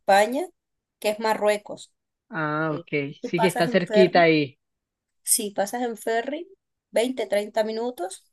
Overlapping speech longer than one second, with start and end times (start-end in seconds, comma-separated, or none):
2.7-4.3